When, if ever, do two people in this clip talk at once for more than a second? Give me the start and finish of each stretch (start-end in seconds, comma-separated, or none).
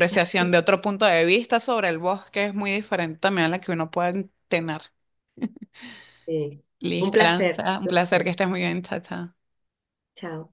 7.0-8.3